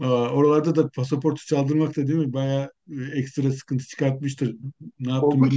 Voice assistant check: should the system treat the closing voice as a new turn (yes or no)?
yes